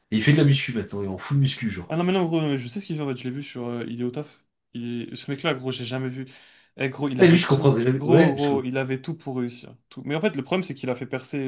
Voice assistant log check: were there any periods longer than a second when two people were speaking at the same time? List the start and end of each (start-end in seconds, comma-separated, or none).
7.2-8.7